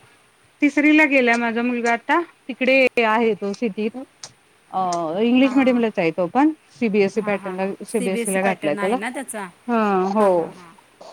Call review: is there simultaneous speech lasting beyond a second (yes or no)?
yes